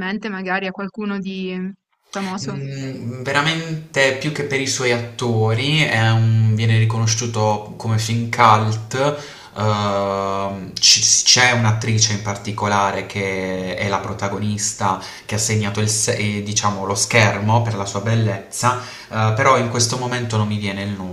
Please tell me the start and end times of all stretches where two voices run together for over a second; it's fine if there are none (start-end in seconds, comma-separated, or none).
none